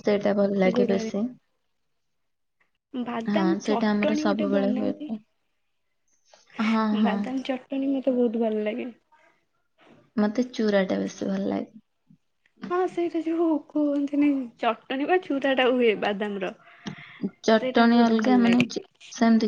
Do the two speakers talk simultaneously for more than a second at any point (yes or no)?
yes